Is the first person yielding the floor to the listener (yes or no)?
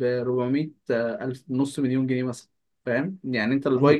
yes